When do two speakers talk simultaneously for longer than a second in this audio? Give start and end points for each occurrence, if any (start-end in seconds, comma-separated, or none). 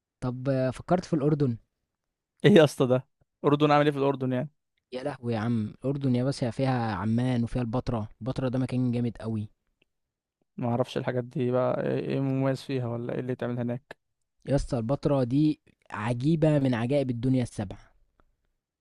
none